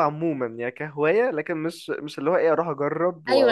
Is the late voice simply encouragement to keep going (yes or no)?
no